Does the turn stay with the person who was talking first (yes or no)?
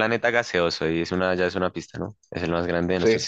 yes